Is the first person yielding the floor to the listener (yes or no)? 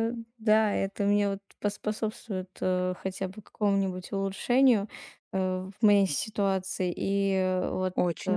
no